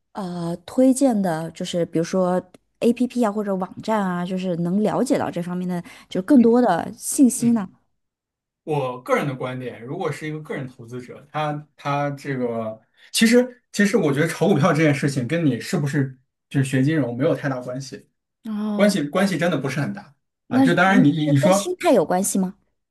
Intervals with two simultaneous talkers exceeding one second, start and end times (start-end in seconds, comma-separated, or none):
20.5-21.7